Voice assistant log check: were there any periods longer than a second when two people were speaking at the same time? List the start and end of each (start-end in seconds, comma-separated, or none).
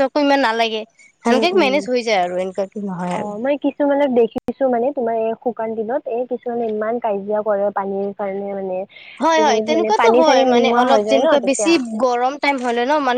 9.4-11.7